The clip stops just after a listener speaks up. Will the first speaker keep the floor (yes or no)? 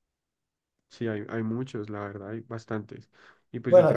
no